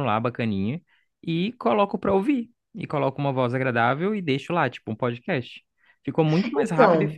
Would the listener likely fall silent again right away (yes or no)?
yes